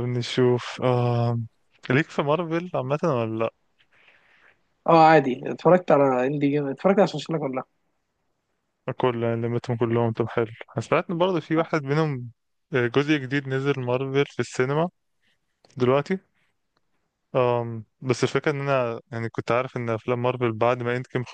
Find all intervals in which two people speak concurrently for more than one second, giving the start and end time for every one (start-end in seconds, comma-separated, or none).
none